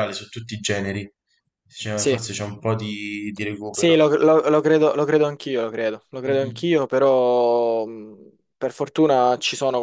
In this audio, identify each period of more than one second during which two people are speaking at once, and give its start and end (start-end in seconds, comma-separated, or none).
none